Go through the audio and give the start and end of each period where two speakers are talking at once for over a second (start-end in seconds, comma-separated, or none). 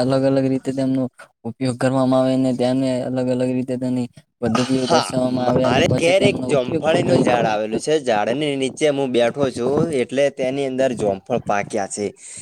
4.9-7.2